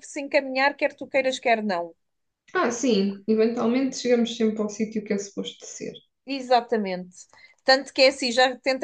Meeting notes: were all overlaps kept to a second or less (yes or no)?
yes